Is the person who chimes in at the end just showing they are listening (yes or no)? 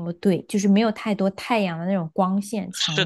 no